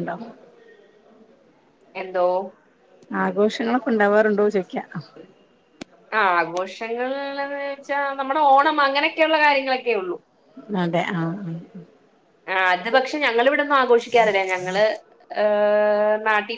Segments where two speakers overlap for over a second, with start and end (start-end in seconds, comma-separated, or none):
none